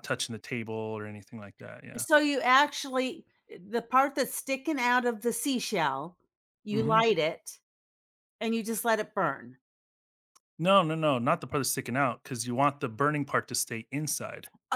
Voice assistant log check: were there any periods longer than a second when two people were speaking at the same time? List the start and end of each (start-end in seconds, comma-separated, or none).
none